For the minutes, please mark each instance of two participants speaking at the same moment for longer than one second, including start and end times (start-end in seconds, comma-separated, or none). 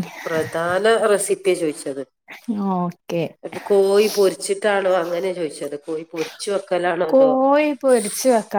none